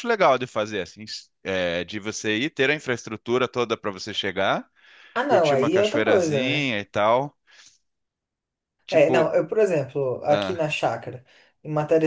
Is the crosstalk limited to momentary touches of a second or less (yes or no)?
no